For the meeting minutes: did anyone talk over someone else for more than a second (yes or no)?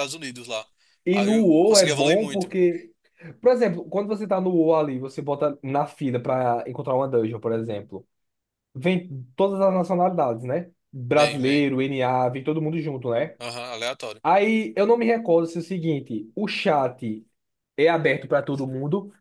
yes